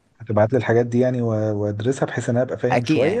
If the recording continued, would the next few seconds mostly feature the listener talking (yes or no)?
yes